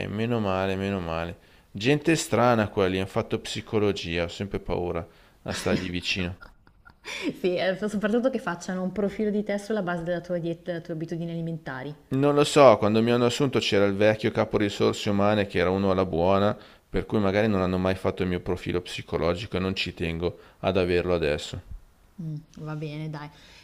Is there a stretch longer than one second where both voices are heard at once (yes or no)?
no